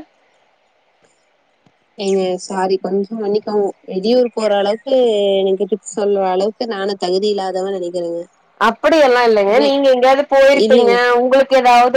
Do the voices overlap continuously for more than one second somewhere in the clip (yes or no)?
no